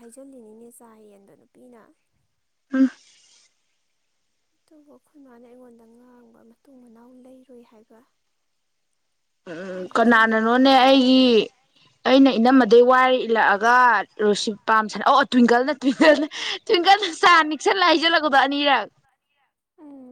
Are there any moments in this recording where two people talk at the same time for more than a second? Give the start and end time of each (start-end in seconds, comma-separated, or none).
9.7-11.2